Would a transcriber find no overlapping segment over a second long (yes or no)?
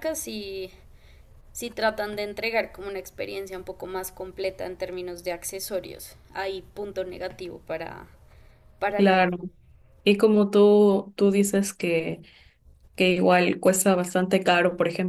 yes